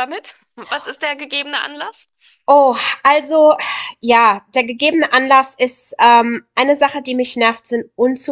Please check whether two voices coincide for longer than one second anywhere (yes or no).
no